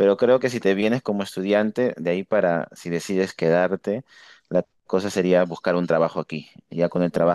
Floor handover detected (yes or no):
no